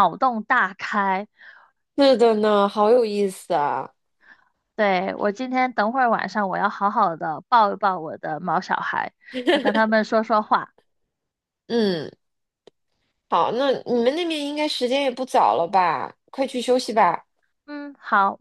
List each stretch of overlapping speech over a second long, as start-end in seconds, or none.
none